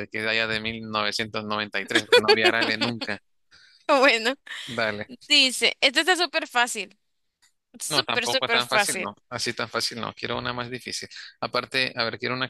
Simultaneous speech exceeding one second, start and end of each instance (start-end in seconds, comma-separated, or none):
7.9-9.2